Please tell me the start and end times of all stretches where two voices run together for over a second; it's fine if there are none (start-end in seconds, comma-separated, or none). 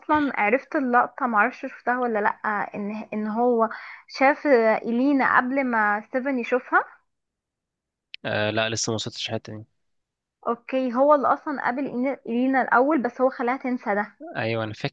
none